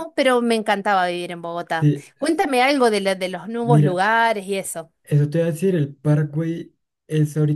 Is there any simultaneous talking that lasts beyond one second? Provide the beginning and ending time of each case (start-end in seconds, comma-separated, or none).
none